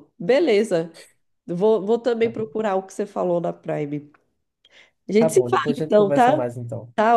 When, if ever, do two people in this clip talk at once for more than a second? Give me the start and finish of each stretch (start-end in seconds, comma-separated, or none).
5.2-6.5